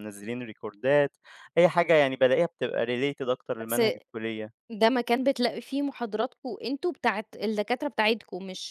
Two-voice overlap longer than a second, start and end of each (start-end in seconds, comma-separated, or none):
none